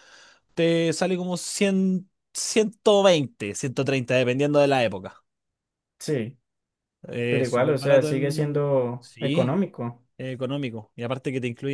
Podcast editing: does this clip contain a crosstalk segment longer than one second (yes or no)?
yes